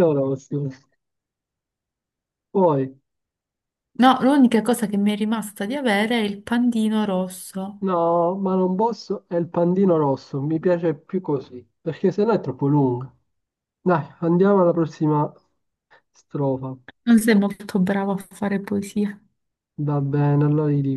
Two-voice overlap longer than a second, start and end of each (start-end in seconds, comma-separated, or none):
none